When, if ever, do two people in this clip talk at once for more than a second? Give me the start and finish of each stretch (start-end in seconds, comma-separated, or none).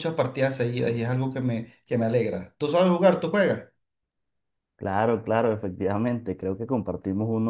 none